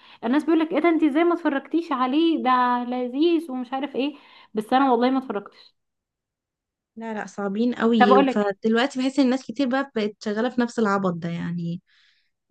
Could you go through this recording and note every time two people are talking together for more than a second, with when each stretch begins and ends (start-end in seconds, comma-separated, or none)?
none